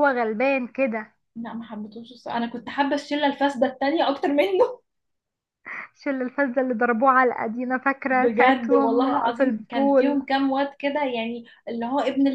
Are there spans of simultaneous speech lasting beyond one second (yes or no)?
yes